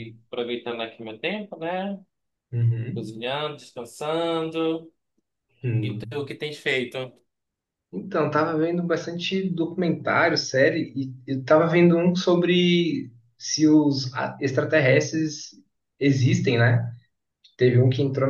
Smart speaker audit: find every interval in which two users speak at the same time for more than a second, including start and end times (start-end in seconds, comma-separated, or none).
none